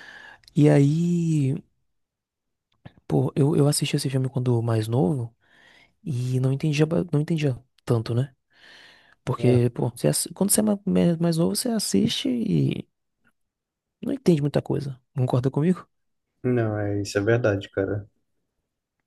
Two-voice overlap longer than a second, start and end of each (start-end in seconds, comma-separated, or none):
none